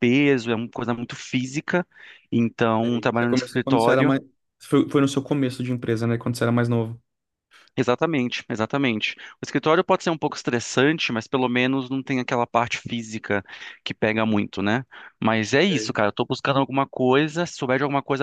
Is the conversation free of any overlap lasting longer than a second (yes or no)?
no